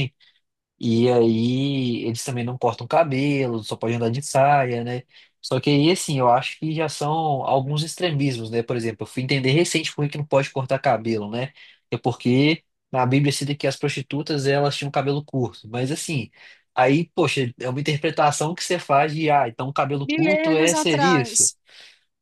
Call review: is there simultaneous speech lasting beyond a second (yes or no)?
yes